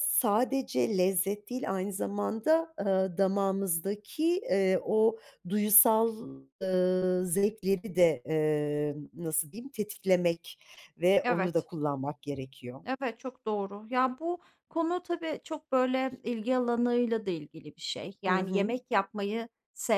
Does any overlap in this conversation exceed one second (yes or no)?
no